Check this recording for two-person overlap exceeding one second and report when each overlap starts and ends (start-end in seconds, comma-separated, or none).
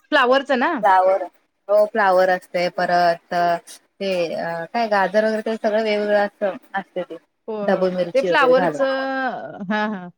7.7-9.1